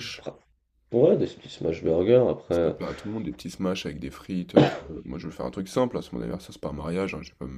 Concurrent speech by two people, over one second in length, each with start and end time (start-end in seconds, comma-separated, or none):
none